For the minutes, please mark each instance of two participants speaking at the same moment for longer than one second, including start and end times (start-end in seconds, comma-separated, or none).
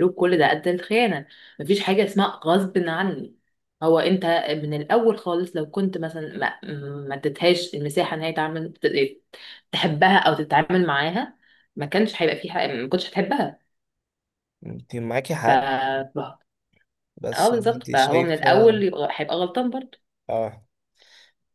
17.3-18.8